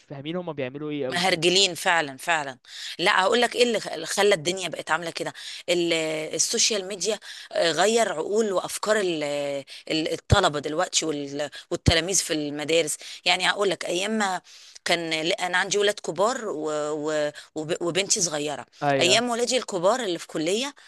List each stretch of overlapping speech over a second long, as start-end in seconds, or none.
none